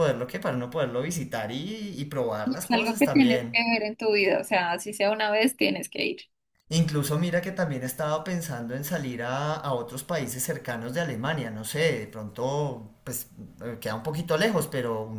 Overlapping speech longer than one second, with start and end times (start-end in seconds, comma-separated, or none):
2.4-3.6